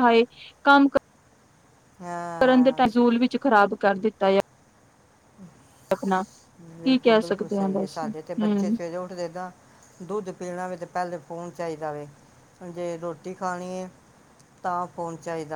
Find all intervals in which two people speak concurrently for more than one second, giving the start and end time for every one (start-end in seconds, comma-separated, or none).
6.8-8.8